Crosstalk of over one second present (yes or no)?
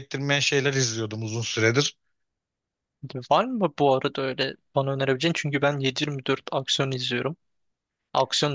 no